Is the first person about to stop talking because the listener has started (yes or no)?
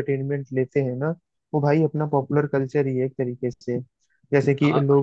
no